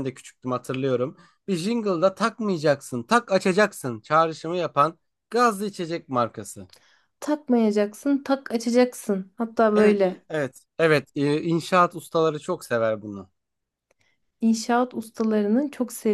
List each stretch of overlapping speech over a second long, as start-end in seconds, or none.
none